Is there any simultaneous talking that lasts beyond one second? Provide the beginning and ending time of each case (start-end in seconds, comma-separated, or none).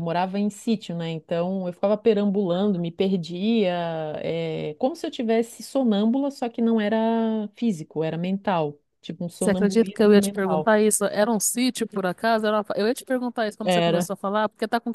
9.4-10.7